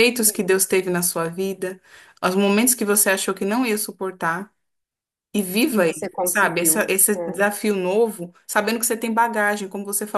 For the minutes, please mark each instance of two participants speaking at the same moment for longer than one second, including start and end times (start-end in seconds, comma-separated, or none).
5.7-7.4